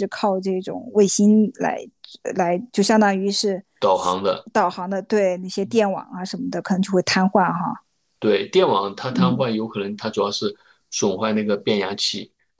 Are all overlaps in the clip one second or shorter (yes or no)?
yes